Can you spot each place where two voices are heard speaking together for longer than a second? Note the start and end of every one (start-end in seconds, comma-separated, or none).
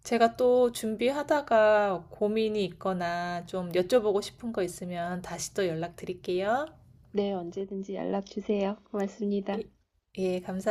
none